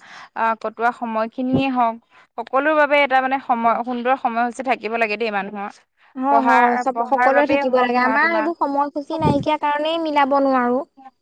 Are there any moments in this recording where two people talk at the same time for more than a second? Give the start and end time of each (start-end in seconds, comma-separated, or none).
6.3-8.5